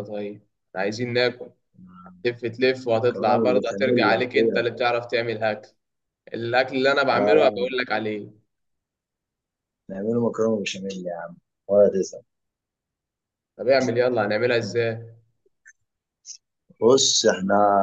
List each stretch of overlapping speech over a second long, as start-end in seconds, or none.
2.9-4.6